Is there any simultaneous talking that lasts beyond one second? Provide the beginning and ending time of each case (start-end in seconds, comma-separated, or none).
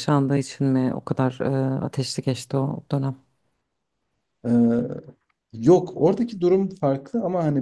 none